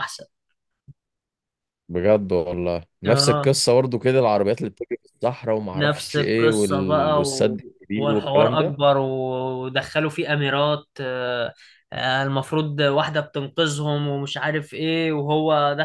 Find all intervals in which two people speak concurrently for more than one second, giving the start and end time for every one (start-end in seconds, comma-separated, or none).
5.7-8.8